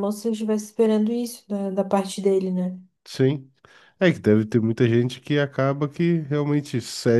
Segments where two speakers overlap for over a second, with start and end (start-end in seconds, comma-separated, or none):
none